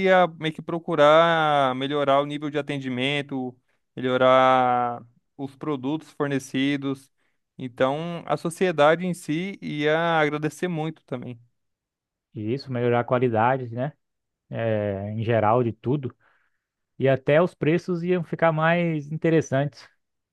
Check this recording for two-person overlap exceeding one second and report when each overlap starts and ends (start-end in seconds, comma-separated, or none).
none